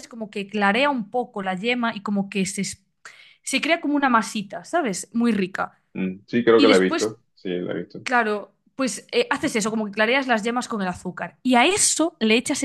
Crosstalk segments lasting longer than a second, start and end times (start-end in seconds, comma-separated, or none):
none